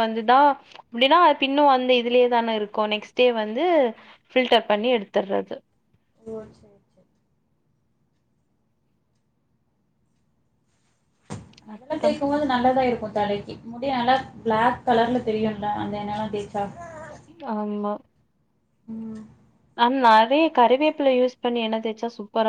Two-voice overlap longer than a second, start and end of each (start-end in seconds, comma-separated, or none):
none